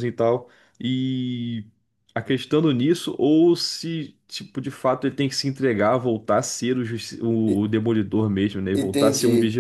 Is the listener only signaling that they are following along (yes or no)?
no